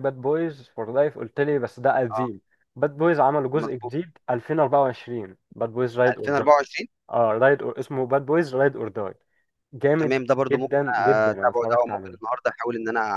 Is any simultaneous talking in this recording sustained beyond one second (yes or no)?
yes